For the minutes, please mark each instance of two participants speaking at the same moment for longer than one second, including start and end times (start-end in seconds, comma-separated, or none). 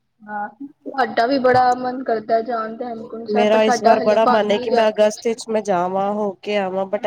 3.3-5.4